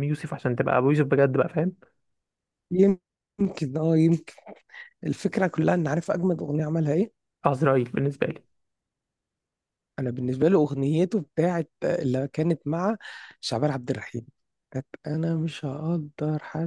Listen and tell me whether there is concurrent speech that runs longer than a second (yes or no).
no